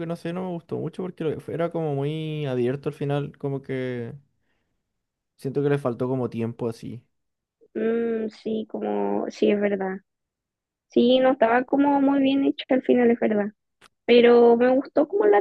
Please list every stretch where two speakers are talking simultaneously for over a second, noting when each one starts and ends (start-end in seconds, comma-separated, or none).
none